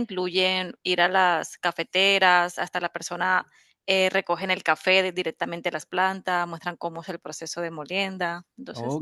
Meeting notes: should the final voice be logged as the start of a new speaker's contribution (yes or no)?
yes